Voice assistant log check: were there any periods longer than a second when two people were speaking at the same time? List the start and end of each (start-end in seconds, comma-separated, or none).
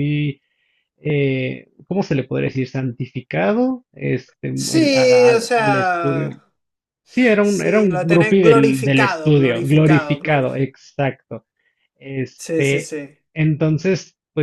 4.5-6.3, 7.4-10.6